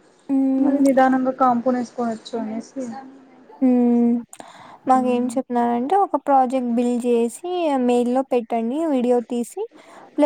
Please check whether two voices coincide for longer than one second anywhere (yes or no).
no